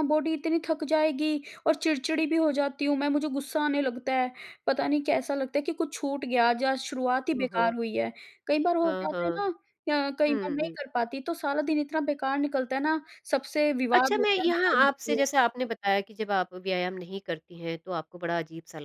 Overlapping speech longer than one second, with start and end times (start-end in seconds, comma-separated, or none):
13.9-15.2